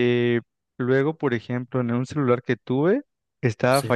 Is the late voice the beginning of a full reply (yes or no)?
no